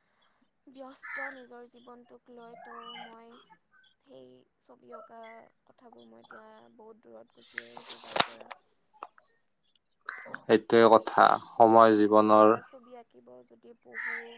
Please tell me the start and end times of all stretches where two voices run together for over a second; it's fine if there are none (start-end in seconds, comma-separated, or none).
none